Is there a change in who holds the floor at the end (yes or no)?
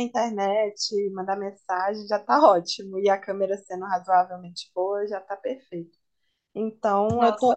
no